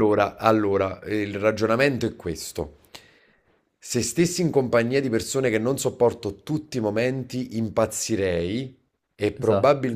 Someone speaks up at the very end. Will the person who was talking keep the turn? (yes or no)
yes